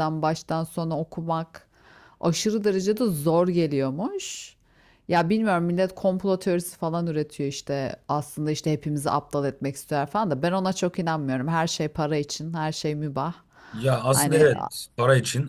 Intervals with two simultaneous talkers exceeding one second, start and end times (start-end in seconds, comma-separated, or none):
none